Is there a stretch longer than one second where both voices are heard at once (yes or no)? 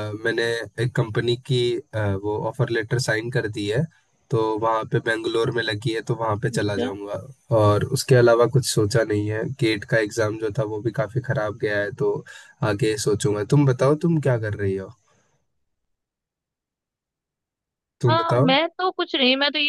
no